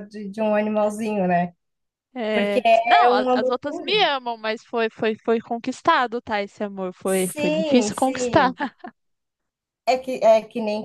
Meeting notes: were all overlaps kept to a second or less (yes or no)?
no